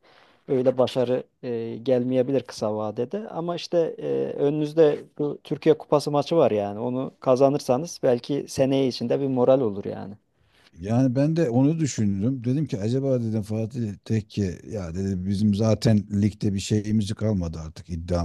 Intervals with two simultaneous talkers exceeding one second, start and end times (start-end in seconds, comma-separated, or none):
none